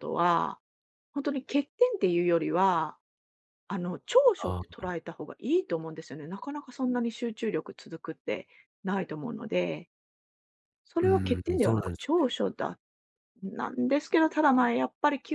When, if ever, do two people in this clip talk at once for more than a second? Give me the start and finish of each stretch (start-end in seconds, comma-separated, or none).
11.0-12.3